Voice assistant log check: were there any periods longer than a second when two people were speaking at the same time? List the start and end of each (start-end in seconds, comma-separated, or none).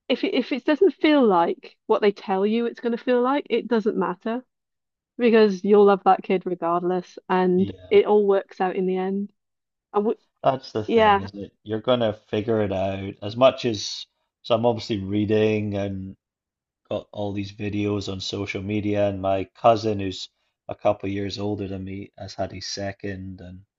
none